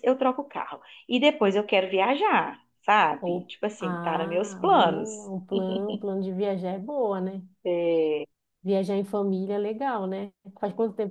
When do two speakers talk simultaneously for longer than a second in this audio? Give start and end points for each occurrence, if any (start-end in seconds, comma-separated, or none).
3.2-5.3